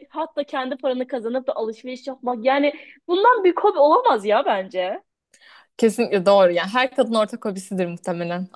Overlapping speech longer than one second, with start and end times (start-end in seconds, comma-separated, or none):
none